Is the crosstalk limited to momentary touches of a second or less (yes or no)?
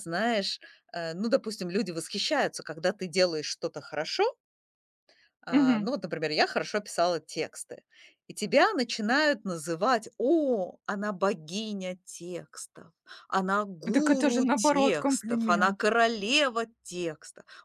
no